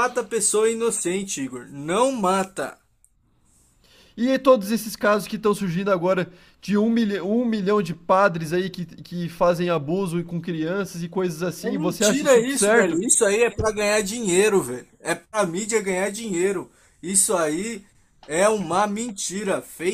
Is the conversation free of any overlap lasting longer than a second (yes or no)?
no